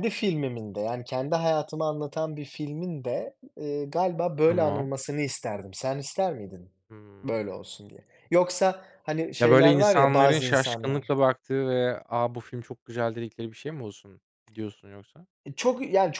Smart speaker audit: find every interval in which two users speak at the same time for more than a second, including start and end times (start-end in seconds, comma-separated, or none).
9.4-11.1